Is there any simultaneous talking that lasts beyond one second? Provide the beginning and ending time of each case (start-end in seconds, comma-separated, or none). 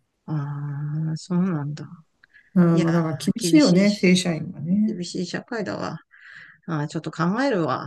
2.7-4.1